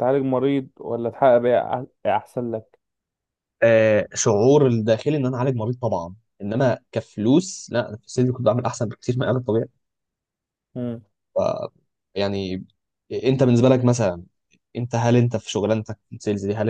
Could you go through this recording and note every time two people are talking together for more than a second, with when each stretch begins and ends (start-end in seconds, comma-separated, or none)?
none